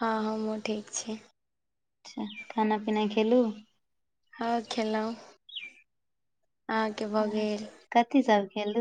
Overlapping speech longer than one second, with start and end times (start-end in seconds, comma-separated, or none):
none